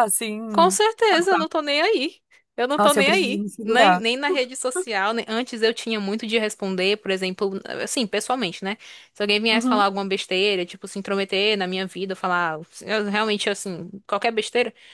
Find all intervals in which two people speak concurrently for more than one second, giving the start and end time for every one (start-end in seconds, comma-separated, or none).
2.8-4.0